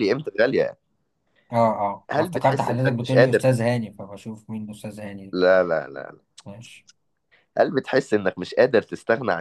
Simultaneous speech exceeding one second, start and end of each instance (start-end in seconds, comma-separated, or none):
2.1-3.7